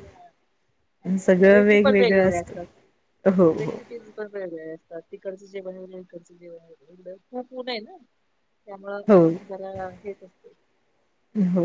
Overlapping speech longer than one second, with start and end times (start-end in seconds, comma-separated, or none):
1.2-2.6